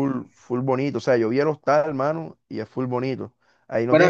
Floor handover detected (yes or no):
no